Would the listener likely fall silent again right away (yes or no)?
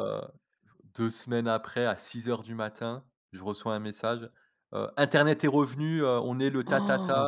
no